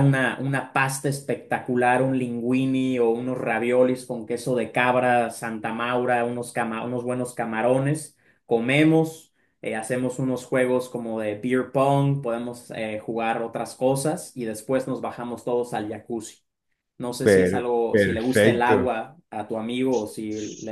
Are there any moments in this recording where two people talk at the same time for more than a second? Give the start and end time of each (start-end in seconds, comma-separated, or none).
17.2-18.9